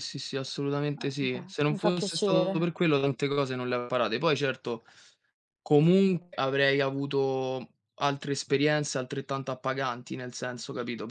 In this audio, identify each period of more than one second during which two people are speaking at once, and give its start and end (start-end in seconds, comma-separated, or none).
1.0-2.5